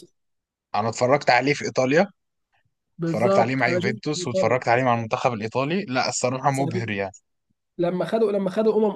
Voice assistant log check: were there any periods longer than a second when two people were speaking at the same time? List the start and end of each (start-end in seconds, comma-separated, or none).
3.0-4.6